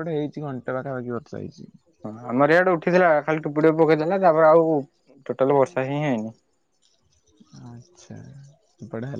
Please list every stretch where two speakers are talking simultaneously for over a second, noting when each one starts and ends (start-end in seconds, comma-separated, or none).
none